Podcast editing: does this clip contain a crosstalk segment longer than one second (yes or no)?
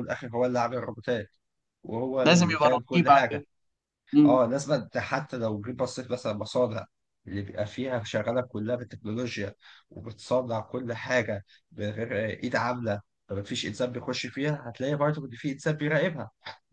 yes